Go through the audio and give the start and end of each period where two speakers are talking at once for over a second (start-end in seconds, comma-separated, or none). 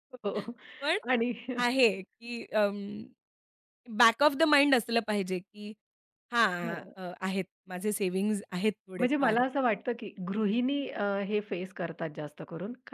none